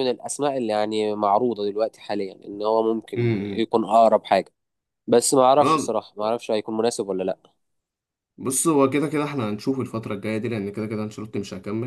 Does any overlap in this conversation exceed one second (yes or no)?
no